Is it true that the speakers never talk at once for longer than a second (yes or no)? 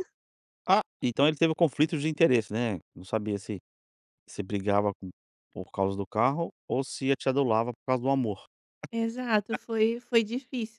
yes